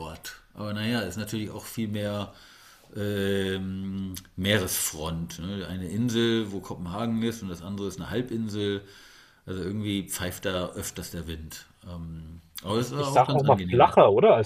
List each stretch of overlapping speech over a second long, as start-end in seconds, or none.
12.7-13.9